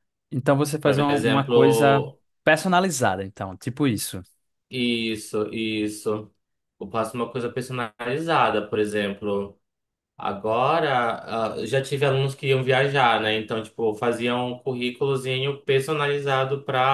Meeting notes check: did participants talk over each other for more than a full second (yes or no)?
yes